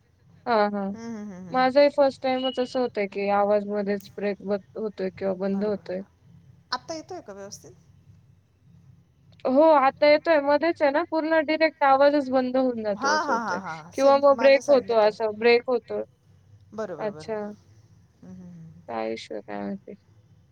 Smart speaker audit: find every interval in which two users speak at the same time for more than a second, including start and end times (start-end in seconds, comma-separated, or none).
13.0-15.1